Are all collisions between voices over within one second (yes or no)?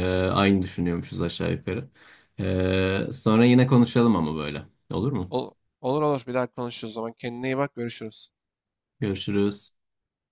yes